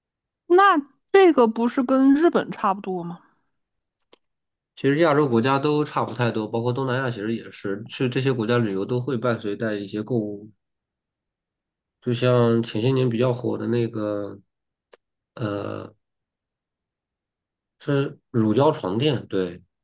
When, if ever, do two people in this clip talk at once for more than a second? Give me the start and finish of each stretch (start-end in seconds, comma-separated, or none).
none